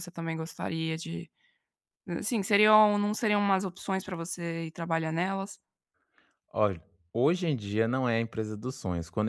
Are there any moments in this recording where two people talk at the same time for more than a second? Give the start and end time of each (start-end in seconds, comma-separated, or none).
none